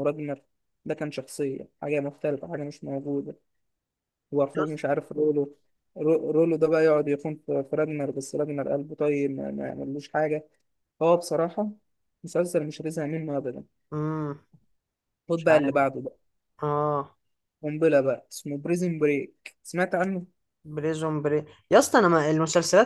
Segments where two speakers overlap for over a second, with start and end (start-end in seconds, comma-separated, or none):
none